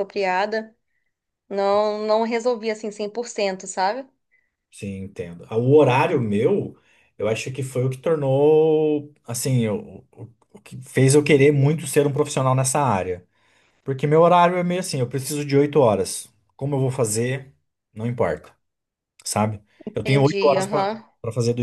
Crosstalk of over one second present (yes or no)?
yes